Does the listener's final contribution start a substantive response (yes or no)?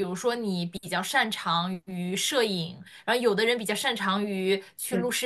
no